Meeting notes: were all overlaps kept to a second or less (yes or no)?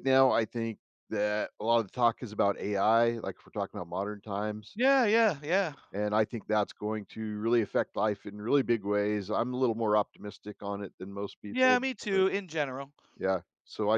yes